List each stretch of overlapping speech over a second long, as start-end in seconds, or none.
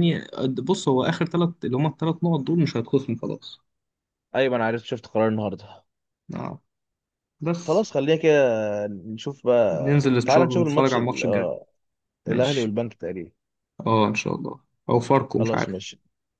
9.7-11.5